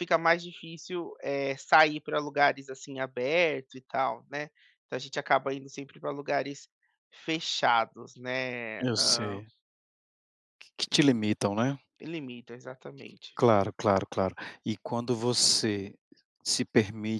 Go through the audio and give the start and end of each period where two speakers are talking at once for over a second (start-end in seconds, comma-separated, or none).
none